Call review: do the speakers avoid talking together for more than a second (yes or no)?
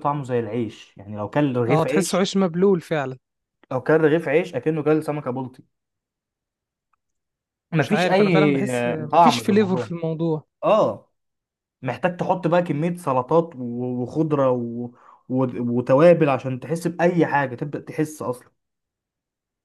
no